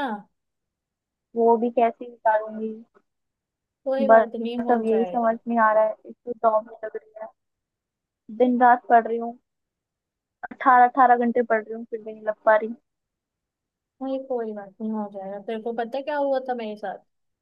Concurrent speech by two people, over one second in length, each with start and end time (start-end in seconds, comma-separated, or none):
4.1-5.4